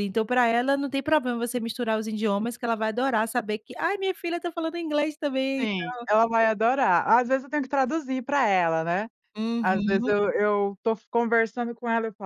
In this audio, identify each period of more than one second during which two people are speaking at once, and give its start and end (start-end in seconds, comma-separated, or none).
none